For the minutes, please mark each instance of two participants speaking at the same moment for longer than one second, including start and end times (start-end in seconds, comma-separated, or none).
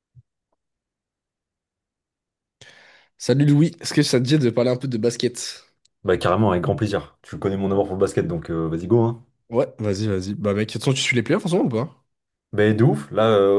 none